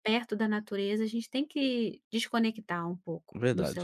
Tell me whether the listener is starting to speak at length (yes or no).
yes